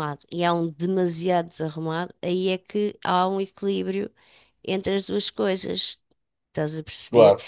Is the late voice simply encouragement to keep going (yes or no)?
yes